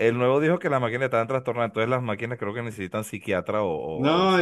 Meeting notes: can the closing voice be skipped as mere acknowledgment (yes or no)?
no